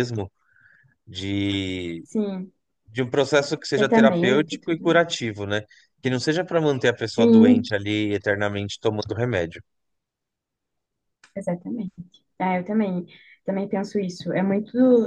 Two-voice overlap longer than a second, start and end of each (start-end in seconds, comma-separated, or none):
3.8-5.0